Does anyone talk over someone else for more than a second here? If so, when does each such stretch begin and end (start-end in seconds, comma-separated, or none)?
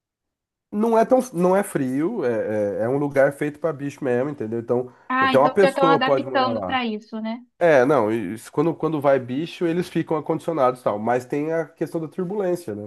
5.1-6.8